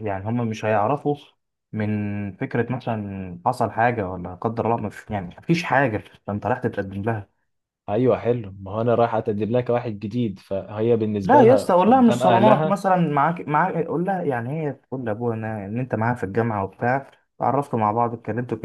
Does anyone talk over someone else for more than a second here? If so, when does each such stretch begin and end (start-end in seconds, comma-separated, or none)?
11.2-12.8